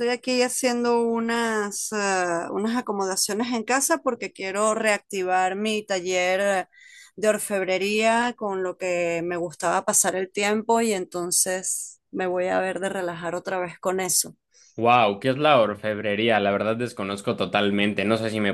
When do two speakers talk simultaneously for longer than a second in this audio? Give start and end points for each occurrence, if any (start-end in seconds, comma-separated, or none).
none